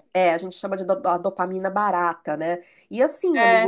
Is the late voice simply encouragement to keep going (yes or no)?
yes